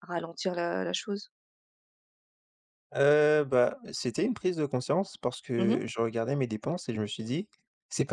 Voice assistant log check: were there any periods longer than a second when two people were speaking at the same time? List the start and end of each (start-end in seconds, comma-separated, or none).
none